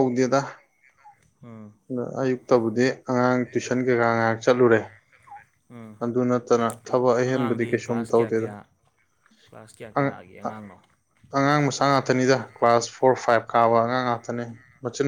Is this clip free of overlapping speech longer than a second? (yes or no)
no